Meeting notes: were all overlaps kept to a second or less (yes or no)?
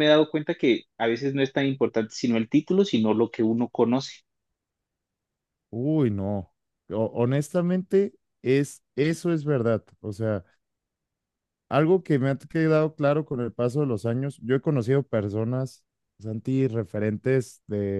yes